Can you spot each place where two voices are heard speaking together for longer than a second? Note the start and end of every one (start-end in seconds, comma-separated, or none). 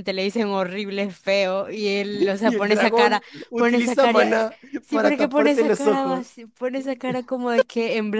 2.4-6.4